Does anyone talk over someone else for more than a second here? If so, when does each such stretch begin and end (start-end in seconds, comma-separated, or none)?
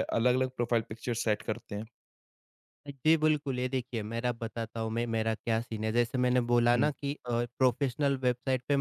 none